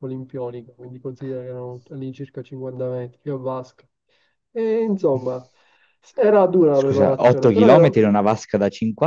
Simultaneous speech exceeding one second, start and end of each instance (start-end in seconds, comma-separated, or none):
6.7-8.1